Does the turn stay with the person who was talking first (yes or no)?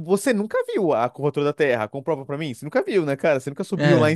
yes